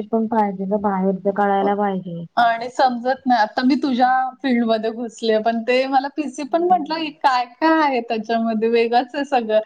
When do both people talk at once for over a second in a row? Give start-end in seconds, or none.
none